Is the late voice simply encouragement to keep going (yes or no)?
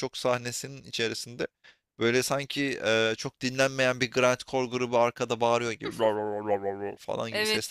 no